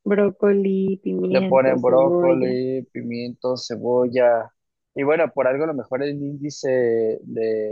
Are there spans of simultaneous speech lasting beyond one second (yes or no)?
yes